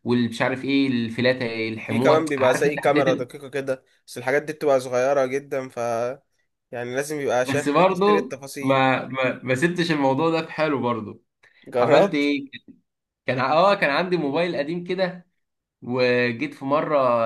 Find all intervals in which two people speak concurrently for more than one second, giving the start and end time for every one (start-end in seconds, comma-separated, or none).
1.9-3.2, 7.4-8.8